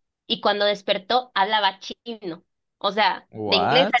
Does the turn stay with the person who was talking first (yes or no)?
yes